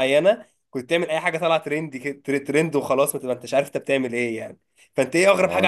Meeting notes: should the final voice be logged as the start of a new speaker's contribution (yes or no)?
no